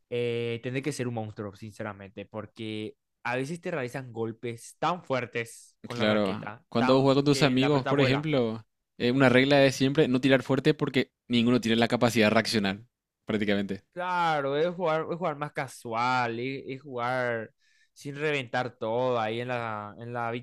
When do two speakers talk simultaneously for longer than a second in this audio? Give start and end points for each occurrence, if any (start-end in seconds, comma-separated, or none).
5.9-8.3